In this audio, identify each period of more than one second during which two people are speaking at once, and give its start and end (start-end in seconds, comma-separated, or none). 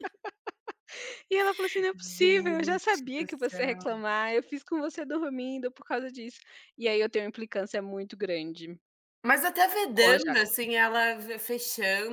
1.9-3.8